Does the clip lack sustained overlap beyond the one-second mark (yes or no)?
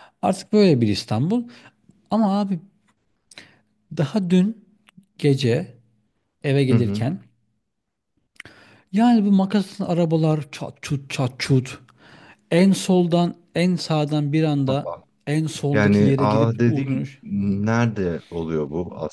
no